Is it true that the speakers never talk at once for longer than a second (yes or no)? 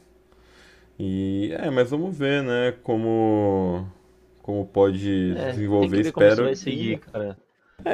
no